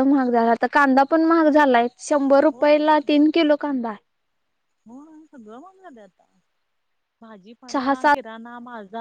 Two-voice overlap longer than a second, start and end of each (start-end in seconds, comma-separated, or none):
none